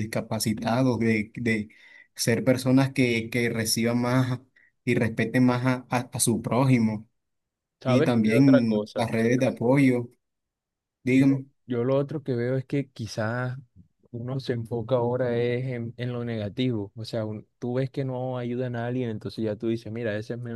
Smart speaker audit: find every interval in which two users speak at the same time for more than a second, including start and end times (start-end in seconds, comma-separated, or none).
7.8-9.1